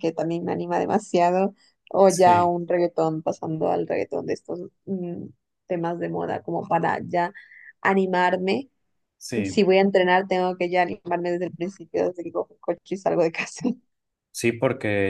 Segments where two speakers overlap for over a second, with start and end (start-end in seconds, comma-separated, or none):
none